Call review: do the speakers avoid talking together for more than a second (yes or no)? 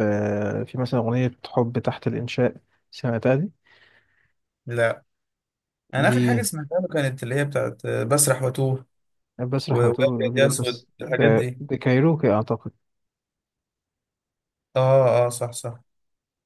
no